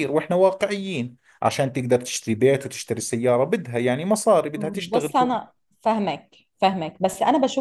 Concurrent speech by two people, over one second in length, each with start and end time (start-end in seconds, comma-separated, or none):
none